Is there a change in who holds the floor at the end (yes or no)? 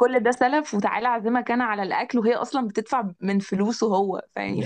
no